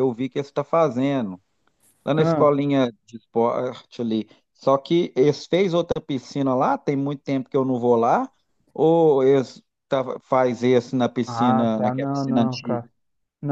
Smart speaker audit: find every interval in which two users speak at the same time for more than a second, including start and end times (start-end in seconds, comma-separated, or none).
11.2-12.8